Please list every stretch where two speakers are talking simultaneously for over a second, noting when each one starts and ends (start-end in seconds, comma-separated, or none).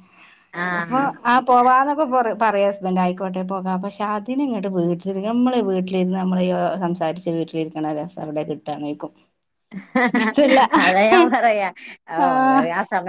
none